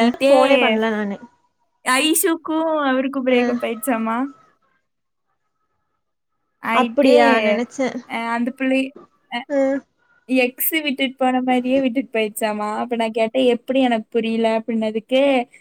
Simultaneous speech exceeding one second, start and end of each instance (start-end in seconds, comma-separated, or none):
none